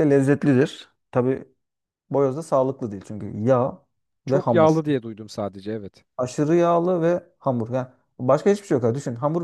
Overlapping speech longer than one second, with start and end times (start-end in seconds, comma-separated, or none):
none